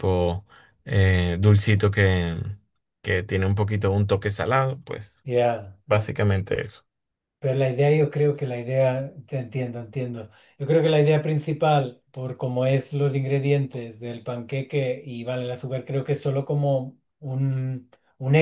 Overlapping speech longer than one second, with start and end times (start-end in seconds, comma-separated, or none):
none